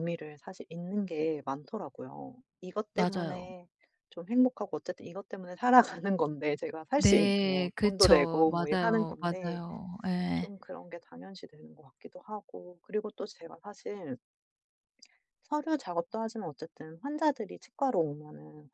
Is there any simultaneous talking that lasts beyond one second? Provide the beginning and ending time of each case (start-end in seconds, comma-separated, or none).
7.0-9.6